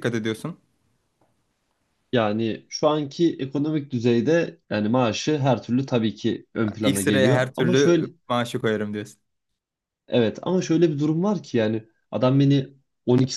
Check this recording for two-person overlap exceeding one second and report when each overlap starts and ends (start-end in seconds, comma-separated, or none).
6.8-8.1